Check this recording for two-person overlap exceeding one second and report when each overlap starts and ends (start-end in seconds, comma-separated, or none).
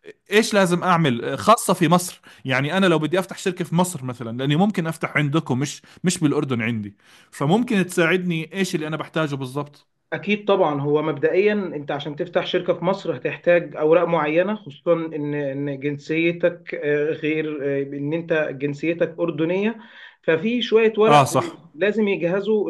none